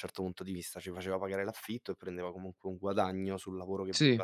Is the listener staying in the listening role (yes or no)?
yes